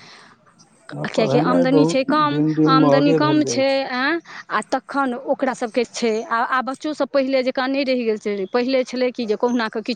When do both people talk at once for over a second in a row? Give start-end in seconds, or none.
1.1-3.6